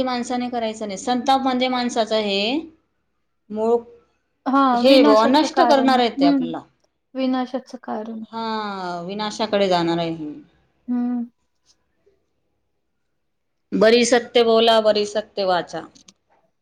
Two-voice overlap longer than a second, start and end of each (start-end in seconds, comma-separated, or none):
4.8-6.5